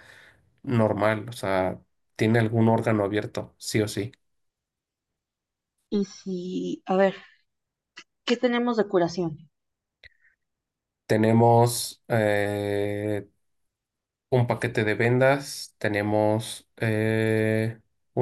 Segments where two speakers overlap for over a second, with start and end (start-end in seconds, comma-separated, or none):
none